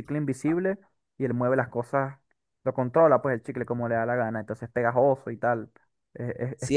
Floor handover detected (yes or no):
yes